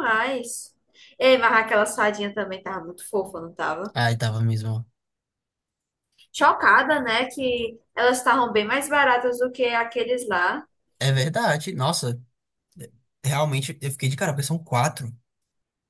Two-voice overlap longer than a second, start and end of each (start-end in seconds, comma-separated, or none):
none